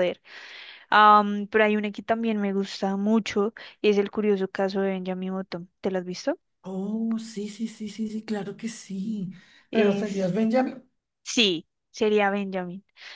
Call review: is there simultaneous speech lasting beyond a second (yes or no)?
no